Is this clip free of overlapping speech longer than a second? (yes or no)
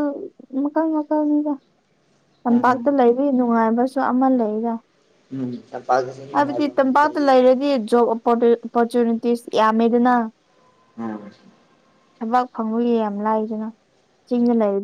yes